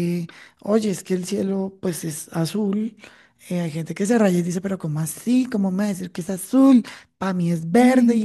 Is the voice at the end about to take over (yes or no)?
no